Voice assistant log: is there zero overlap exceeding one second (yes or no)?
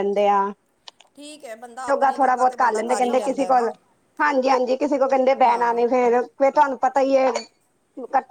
no